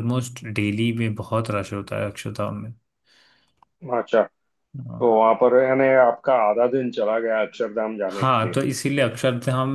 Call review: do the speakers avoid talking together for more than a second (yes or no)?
yes